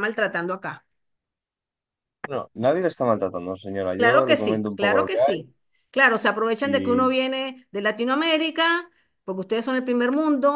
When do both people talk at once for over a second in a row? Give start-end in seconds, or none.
4.0-5.4